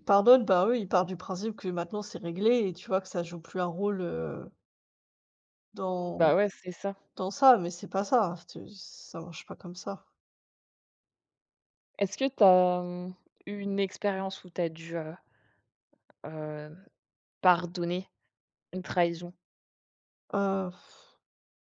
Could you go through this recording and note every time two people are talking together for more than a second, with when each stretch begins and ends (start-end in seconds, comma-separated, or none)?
none